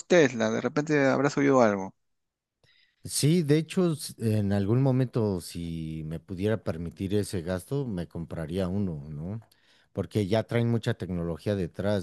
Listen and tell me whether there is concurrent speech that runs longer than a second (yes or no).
no